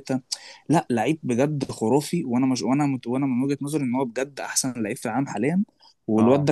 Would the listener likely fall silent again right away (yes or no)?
yes